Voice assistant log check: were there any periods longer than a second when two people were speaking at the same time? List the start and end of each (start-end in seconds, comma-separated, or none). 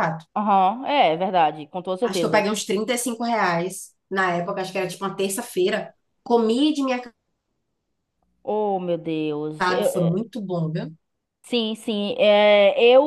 none